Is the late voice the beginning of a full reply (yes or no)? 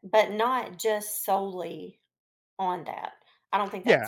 yes